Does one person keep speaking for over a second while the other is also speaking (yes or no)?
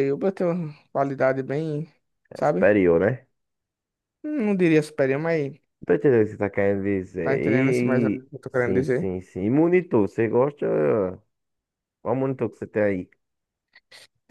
yes